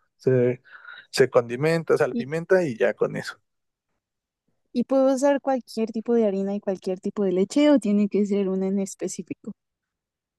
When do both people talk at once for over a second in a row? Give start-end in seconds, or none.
none